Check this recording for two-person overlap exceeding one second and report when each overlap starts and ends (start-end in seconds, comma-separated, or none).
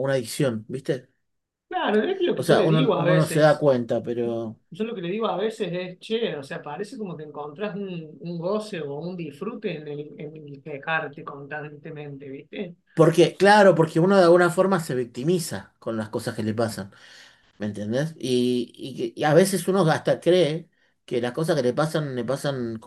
2.4-3.7